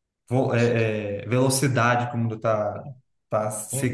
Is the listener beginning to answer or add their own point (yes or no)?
yes